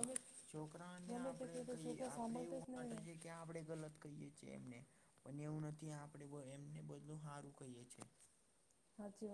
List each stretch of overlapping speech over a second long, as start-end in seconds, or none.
1.1-3.0